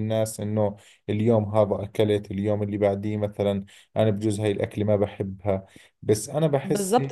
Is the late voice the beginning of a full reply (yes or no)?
yes